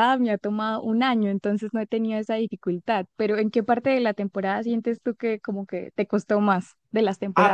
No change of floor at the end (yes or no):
no